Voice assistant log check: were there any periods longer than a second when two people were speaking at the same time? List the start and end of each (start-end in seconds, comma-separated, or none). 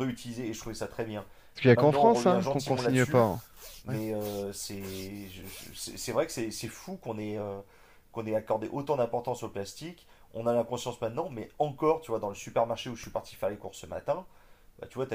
1.7-3.3